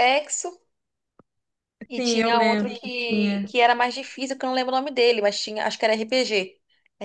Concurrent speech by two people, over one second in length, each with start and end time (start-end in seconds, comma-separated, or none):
1.9-3.5